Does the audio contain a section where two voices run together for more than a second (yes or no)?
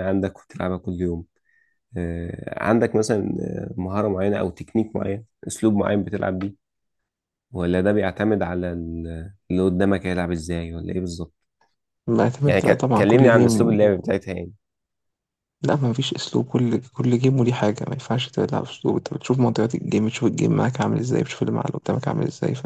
yes